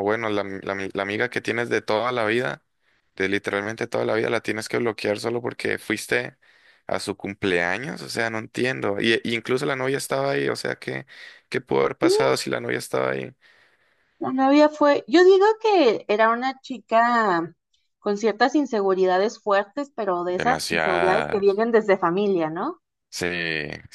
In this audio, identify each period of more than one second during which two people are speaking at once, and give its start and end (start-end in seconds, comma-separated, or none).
20.4-21.6